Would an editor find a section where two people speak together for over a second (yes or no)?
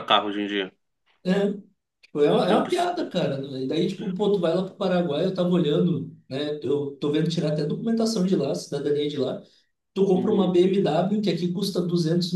no